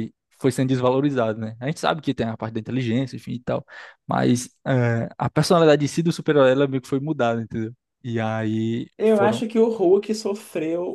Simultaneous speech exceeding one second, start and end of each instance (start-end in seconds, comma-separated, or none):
none